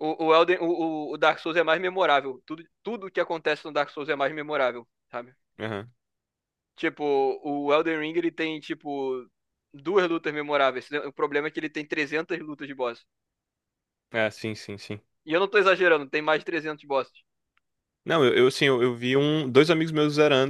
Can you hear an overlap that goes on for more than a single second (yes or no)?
no